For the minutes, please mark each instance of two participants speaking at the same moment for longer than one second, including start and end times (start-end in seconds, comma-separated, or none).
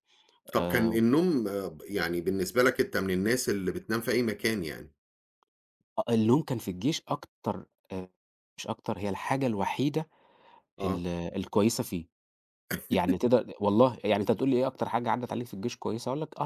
none